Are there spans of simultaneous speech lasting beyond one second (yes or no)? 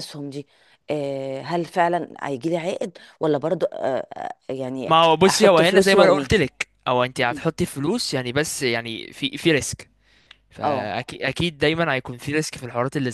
yes